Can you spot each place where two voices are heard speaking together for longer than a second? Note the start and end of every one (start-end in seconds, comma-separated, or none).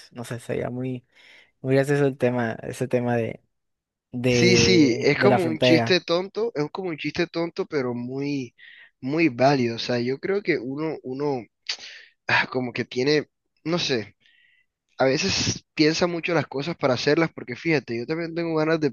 4.3-6.0